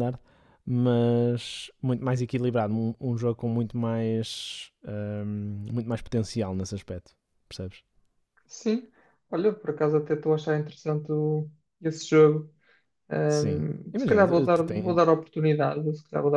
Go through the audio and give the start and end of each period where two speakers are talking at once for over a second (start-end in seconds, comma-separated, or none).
13.3-15.0